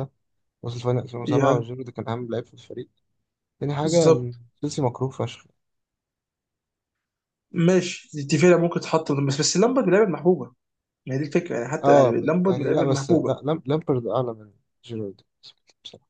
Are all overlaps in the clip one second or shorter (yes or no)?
no